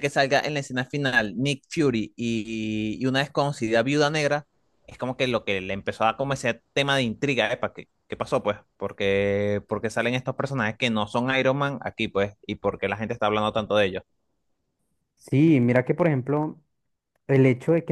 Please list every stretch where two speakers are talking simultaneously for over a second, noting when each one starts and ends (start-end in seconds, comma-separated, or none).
none